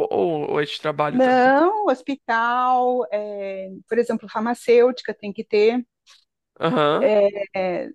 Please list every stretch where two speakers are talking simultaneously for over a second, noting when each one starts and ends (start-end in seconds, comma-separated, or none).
none